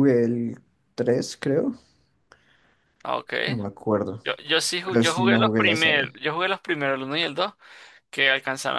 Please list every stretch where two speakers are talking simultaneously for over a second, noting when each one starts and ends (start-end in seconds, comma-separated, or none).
4.8-6.0